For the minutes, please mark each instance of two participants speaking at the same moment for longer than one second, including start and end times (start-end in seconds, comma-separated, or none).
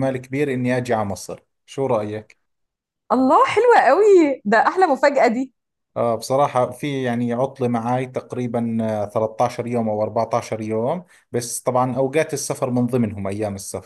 none